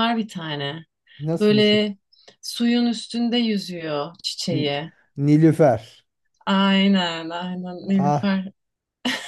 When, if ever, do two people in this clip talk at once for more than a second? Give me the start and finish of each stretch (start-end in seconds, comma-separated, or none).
none